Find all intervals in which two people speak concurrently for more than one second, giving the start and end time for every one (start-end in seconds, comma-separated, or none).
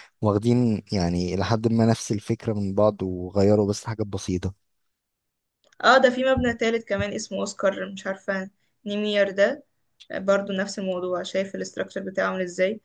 none